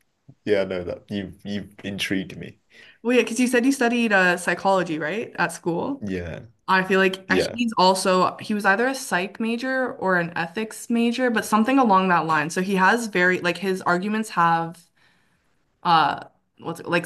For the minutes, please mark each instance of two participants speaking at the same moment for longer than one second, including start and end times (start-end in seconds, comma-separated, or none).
none